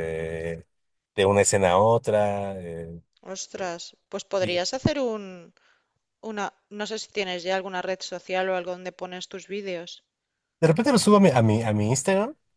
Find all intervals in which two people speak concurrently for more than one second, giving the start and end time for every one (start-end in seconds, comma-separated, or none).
none